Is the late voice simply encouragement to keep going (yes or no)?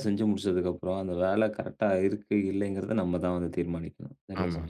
no